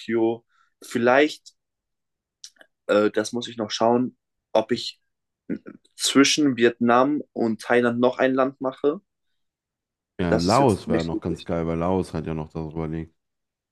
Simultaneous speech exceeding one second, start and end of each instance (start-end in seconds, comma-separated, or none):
10.3-11.5